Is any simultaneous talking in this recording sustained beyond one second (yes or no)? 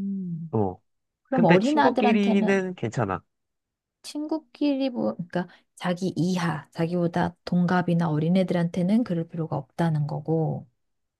yes